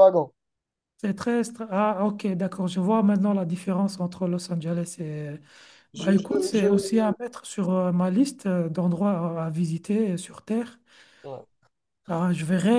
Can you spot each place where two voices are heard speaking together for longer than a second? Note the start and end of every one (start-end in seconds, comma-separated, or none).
5.9-7.2